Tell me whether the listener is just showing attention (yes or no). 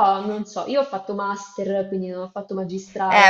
no